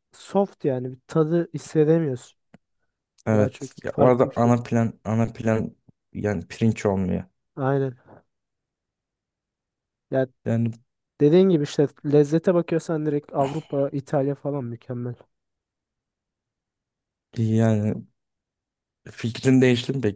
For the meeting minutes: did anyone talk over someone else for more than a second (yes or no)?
yes